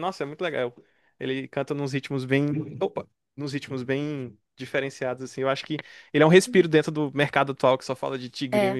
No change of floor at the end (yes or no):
no